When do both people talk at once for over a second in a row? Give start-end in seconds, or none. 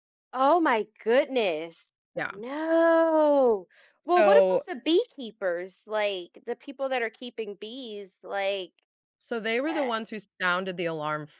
none